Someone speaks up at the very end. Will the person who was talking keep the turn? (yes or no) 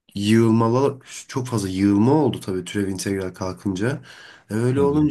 yes